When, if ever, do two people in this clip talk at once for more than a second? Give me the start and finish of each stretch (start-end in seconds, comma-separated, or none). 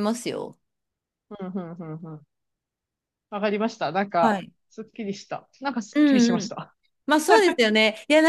none